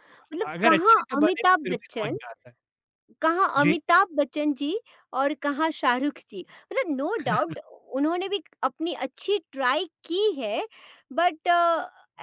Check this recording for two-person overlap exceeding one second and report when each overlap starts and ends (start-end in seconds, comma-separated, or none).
0.5-2.2